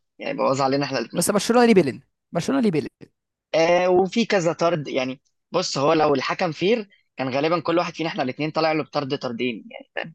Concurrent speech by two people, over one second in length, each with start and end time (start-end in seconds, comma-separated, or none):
none